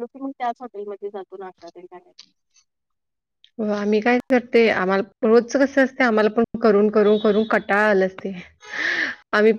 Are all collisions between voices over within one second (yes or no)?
yes